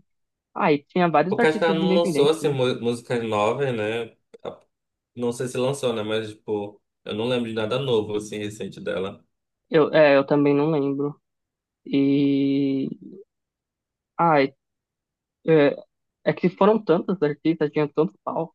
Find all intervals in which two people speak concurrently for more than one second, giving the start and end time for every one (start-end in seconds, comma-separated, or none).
1.3-2.5